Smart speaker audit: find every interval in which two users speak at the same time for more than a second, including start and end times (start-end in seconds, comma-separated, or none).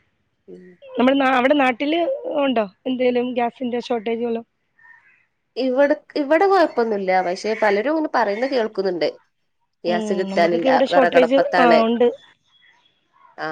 9.9-11.8